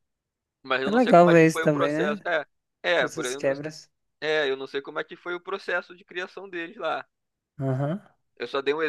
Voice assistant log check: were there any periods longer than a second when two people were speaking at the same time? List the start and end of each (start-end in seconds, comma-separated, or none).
0.8-2.2